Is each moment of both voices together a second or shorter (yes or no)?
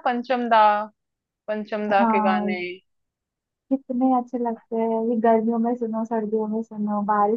yes